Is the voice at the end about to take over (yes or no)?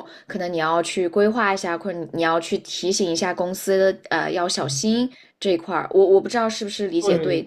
yes